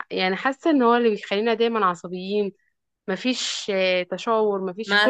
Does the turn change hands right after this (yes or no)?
yes